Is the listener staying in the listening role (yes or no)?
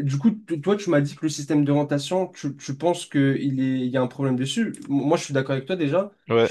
no